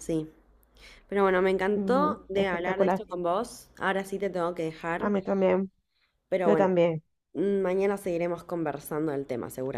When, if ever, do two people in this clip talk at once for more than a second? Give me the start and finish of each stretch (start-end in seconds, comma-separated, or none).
1.7-3.0